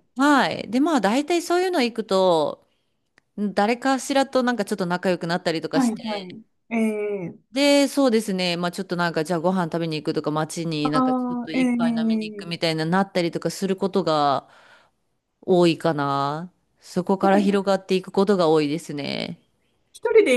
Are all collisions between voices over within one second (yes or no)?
no